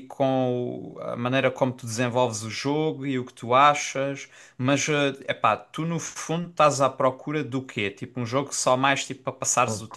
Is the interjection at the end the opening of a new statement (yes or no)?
yes